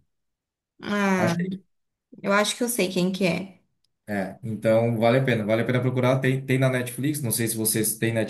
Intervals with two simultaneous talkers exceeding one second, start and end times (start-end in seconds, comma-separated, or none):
none